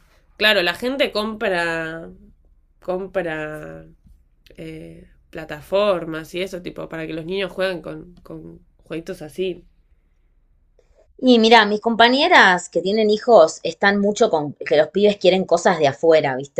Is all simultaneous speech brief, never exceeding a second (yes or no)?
yes